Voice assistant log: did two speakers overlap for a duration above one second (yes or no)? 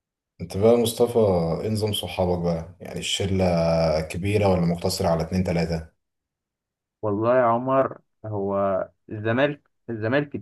no